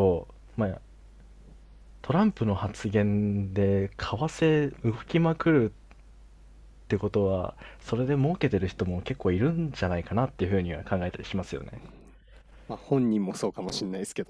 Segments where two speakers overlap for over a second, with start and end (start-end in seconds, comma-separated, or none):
none